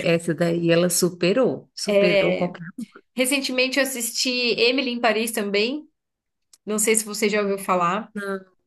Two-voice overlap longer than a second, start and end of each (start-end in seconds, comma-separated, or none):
none